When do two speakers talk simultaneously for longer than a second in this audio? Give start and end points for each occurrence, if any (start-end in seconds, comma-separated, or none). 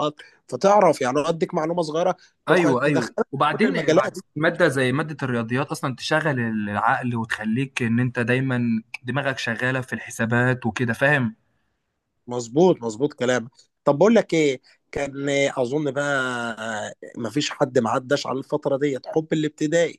2.5-4.2